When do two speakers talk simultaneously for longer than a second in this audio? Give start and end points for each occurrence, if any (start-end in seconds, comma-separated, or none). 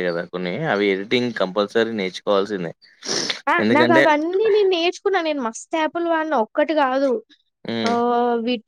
none